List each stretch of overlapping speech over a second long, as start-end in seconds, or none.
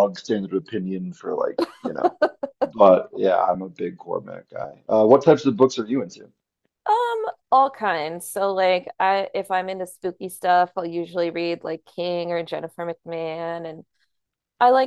none